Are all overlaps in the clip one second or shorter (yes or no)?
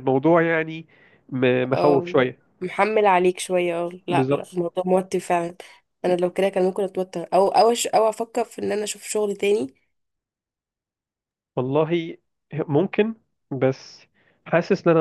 yes